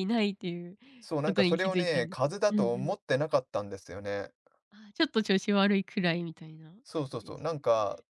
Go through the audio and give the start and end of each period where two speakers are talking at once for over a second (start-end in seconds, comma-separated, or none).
1.2-2.9